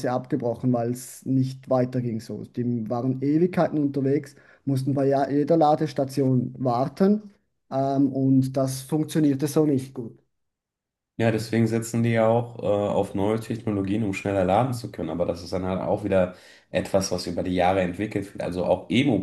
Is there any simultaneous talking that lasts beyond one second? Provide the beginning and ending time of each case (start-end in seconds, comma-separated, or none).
none